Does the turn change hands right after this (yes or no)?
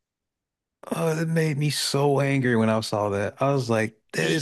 no